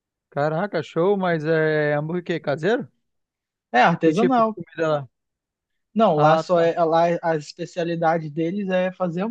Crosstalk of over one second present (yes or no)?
no